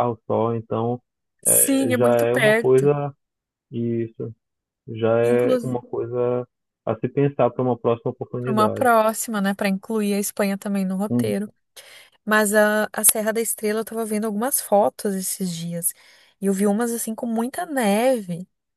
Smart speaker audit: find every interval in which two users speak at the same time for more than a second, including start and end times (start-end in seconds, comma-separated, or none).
1.4-2.9